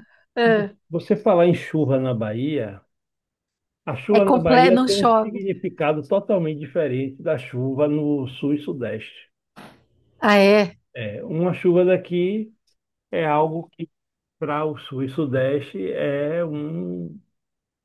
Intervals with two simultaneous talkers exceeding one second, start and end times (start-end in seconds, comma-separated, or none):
4.1-5.4